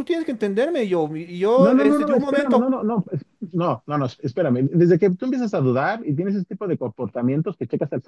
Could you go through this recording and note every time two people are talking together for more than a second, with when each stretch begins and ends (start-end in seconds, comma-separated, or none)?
1.6-2.8